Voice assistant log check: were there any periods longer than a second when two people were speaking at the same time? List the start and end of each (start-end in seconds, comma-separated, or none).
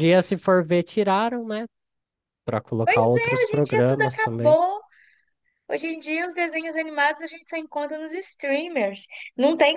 2.8-4.6